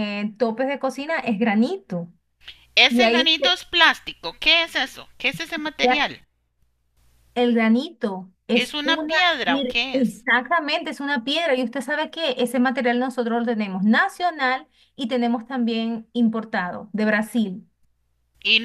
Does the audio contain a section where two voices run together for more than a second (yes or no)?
yes